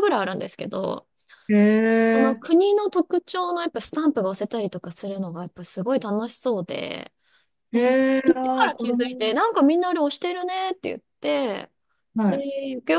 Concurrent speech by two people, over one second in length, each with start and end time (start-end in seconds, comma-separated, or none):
7.7-9.3